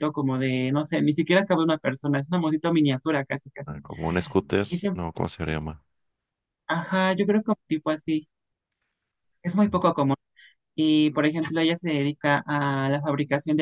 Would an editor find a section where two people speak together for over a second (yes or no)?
no